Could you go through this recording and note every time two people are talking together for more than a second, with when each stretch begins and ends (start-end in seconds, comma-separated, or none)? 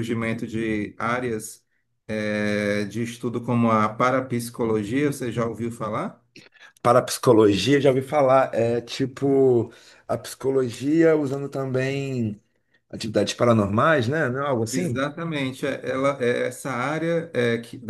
none